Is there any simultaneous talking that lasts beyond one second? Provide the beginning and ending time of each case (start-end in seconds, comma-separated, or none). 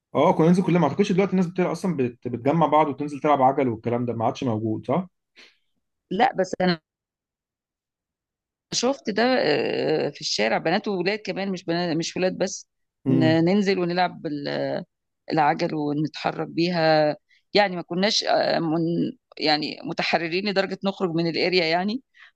none